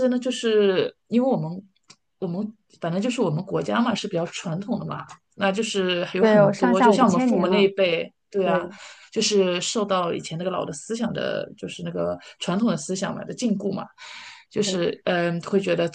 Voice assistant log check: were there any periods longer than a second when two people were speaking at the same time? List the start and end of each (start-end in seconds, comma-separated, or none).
6.2-7.7